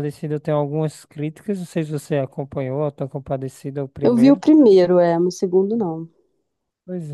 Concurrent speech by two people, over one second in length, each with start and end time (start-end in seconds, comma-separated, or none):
none